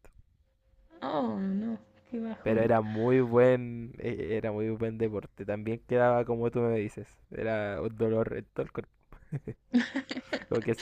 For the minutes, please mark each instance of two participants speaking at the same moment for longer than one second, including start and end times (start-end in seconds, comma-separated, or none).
none